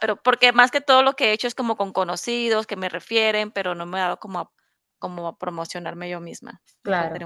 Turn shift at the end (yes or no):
yes